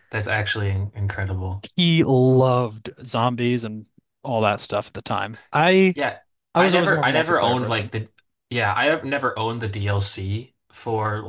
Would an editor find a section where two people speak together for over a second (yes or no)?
yes